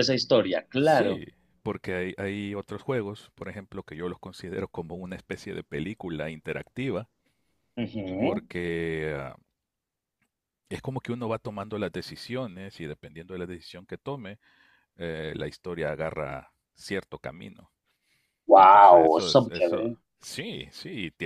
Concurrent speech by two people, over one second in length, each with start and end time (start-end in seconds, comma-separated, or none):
18.6-20.0